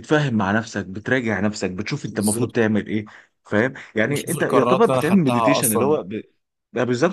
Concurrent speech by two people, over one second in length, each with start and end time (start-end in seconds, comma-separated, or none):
4.1-6.0